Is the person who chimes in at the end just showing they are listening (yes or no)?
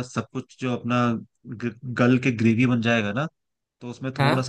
yes